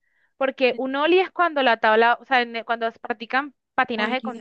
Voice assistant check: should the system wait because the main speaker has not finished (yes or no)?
yes